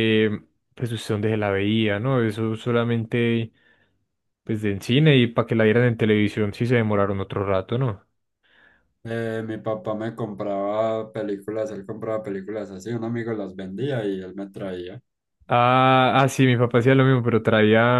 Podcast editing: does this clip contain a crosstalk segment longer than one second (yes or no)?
no